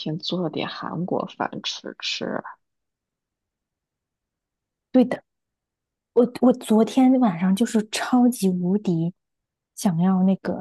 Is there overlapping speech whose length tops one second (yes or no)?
no